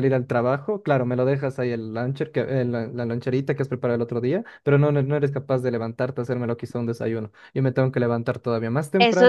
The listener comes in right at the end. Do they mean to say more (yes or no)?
yes